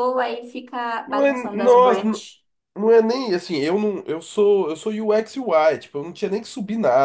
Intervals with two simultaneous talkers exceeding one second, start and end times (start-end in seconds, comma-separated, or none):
1.0-2.3